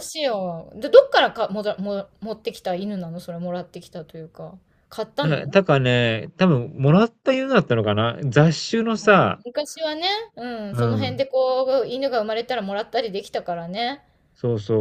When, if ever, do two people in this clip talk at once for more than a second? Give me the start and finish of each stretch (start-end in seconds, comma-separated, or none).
none